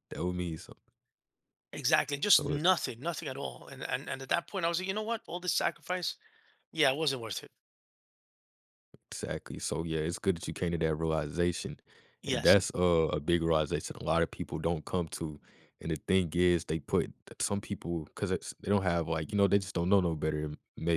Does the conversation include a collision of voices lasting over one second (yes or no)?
no